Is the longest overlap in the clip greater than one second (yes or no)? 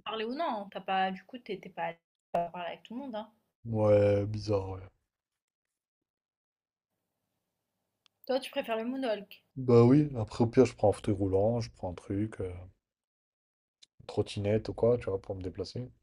no